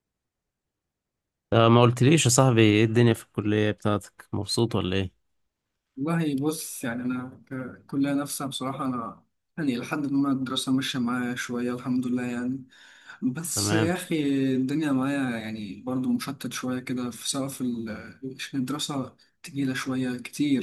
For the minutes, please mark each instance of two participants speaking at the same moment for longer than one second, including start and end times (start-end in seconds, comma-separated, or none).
none